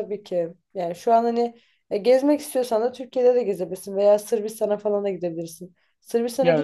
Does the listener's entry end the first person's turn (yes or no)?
no